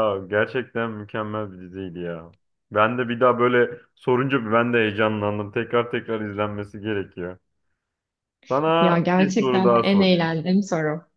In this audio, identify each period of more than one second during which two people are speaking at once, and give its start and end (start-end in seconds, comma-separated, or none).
8.8-10.4